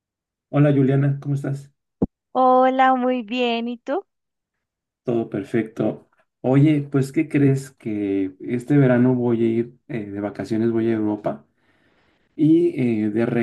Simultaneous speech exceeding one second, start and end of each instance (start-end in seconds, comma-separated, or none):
none